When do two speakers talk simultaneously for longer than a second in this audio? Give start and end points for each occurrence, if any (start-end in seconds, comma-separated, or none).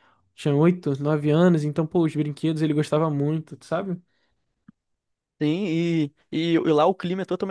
none